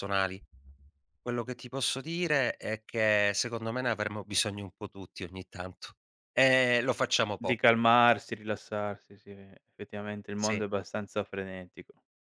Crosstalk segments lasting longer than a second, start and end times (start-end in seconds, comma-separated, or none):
none